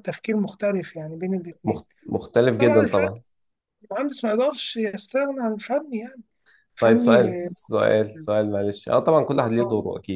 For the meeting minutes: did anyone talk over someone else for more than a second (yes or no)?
no